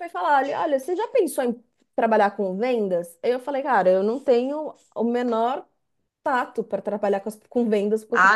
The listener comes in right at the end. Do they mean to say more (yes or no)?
yes